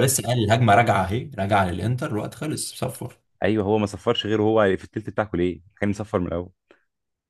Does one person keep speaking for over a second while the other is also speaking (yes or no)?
no